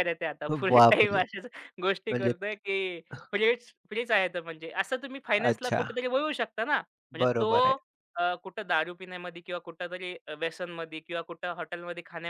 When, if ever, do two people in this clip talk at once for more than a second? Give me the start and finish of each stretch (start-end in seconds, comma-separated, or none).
none